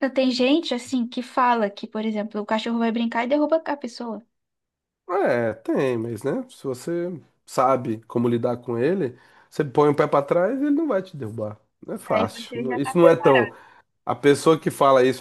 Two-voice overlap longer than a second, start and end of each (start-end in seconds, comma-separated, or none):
12.1-13.5